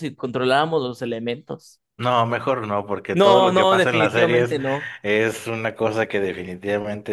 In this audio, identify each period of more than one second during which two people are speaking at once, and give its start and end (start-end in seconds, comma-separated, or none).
3.1-4.6